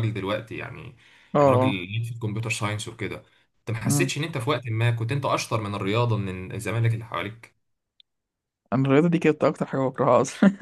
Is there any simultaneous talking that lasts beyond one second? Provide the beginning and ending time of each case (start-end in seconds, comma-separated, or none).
none